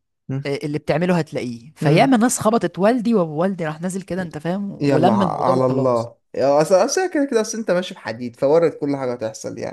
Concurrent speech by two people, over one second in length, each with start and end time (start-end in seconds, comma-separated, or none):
4.8-6.1